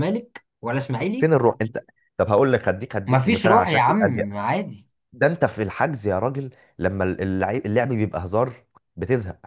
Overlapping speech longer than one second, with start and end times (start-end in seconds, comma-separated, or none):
3.1-4.3